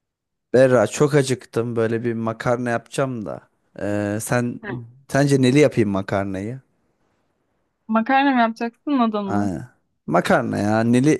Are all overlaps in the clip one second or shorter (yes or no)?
yes